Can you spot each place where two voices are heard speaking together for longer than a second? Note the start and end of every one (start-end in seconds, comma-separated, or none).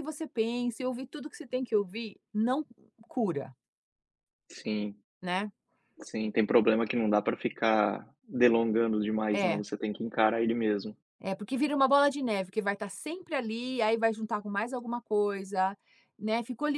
none